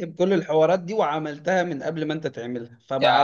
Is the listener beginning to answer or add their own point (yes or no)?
yes